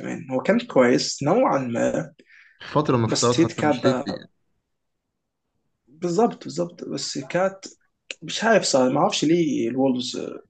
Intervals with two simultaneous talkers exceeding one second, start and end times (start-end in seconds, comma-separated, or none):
3.0-4.2